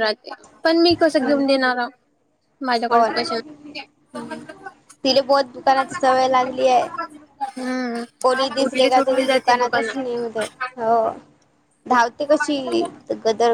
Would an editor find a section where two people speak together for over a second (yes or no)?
yes